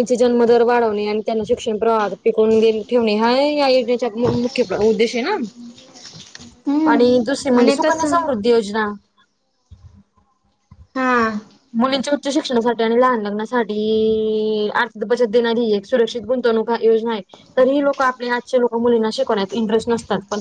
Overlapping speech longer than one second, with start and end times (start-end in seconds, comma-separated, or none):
6.9-8.2